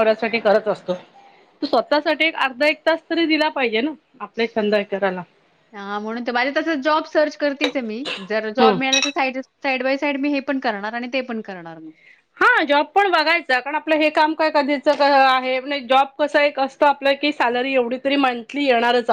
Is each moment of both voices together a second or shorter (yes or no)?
yes